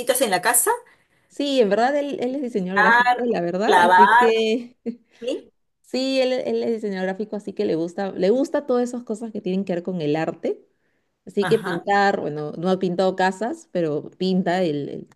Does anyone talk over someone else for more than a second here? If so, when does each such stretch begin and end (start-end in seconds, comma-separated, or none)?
2.7-4.3